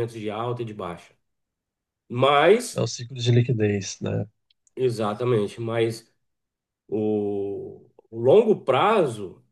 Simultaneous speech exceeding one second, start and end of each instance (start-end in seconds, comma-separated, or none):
none